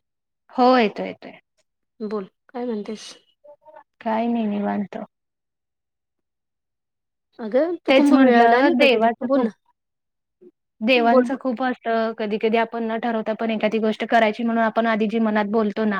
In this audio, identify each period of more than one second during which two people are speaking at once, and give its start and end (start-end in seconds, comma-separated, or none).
7.9-9.4